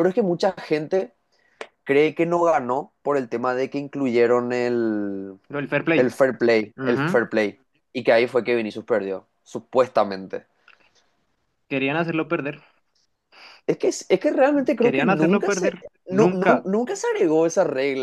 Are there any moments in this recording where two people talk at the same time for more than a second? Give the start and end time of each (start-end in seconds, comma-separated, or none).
14.8-16.7